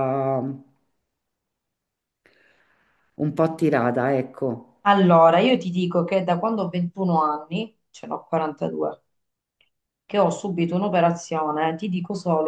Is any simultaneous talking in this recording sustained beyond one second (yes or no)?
no